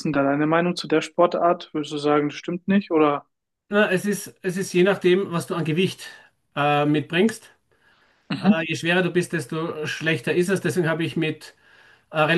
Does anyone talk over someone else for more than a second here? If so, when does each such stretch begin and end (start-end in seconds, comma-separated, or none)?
none